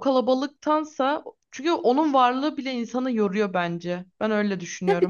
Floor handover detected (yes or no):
yes